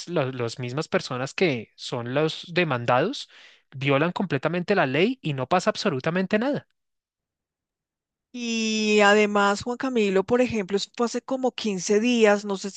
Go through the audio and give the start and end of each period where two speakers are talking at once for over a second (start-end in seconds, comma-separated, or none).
none